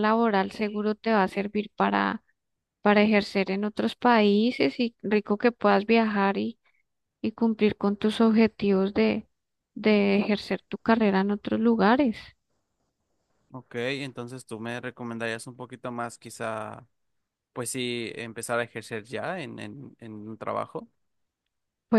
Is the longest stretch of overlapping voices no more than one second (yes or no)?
yes